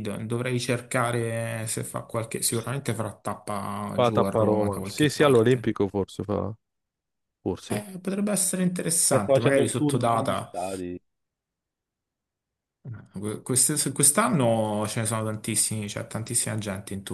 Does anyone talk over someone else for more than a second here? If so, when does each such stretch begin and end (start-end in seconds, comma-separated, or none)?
3.9-5.7, 9.1-10.5